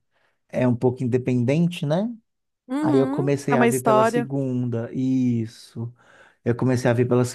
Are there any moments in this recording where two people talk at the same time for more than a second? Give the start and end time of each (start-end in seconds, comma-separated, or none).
2.8-4.3